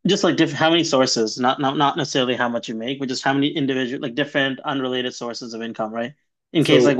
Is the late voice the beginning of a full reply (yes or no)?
no